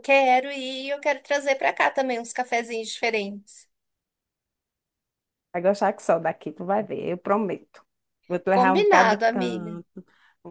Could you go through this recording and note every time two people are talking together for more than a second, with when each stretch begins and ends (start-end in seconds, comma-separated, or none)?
8.5-9.7